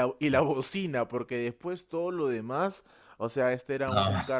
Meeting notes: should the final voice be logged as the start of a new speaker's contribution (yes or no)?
no